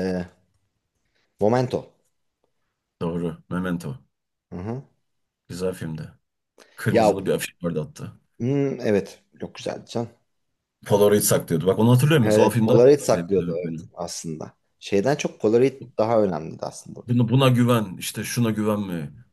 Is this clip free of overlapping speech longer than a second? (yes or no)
no